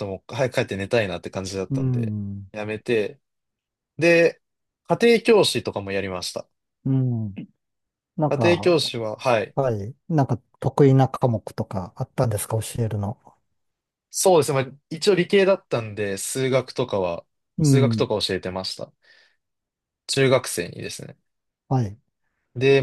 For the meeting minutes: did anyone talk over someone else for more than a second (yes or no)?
no